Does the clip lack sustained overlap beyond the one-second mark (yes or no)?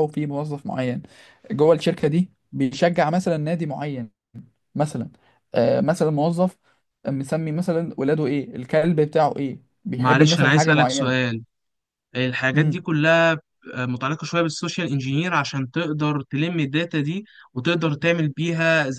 no